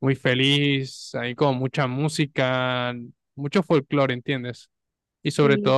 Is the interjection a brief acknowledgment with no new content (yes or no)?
yes